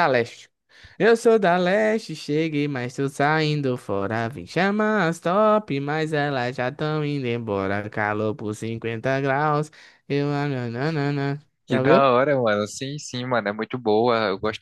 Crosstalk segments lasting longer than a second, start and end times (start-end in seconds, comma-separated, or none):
none